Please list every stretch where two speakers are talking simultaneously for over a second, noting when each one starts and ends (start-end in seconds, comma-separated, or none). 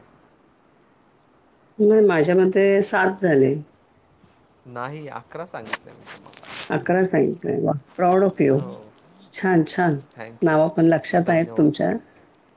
none